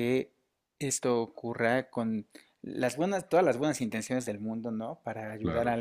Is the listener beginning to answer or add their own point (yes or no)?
no